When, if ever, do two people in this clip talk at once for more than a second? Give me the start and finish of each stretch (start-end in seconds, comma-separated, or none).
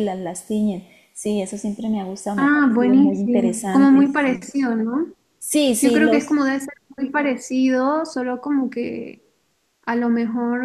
2.4-4.4